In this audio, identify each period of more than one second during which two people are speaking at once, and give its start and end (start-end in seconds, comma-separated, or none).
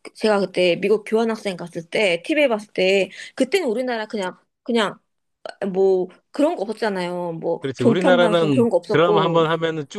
7.6-9.4